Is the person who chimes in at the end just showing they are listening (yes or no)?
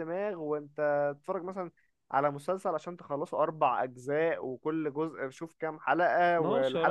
no